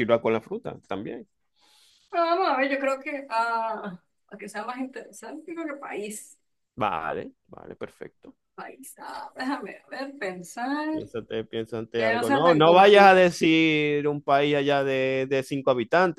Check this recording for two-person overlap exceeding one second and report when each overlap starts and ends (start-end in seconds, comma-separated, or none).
11.9-13.2